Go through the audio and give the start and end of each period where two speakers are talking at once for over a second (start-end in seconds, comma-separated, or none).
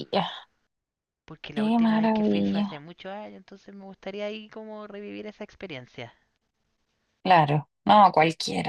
1.5-2.8